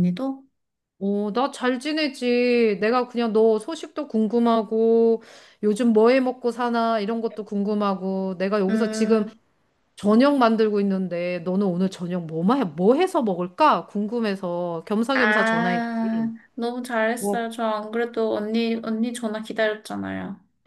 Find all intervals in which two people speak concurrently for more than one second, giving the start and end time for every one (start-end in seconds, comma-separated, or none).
15.1-16.3